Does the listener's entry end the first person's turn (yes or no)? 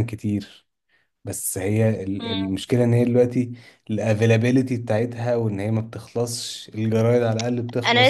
yes